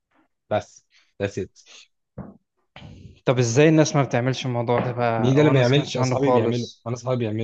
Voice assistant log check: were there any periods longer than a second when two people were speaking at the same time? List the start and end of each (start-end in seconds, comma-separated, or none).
5.2-6.9